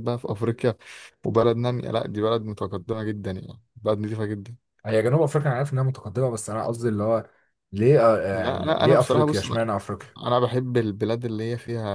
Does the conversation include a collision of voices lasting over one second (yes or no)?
yes